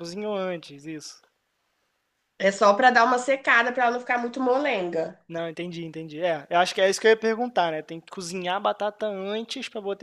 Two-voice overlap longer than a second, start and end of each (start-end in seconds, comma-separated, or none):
none